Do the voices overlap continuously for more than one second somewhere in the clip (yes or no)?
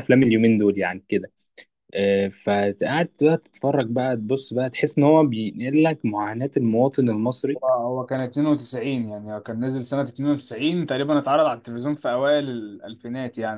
no